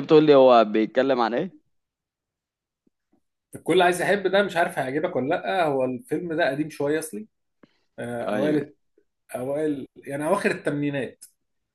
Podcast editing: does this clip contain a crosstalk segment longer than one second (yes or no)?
no